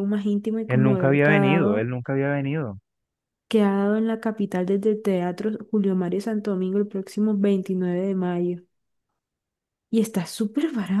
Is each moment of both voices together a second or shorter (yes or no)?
no